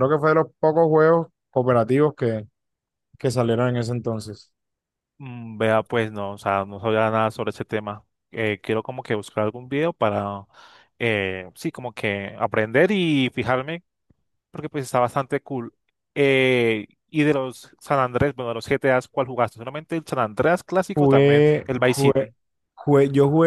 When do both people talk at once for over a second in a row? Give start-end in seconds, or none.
20.9-22.3